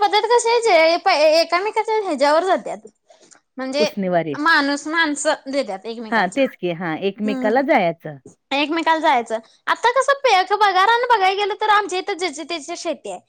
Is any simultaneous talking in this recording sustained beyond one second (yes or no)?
yes